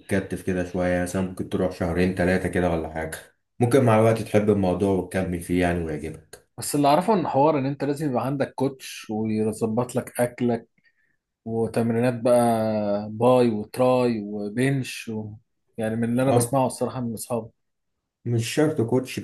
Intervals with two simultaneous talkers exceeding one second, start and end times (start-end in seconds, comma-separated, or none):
none